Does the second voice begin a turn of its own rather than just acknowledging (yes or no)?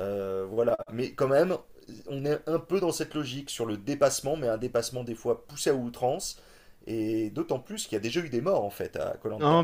yes